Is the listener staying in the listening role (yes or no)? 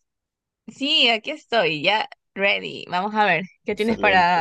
no